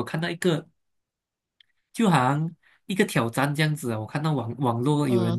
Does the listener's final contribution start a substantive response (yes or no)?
no